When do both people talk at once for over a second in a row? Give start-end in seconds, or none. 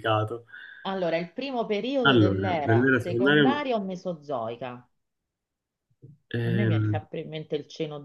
2.0-3.4